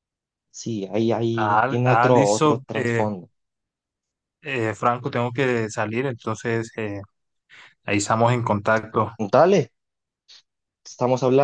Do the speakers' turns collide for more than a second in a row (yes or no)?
yes